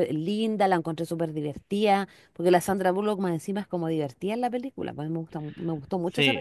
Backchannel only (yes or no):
no